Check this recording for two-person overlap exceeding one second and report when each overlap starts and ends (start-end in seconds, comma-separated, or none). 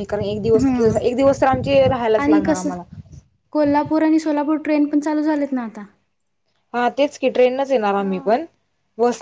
none